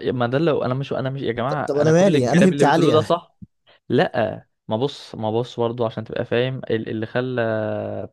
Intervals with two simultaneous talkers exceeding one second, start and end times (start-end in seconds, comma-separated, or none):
1.5-3.1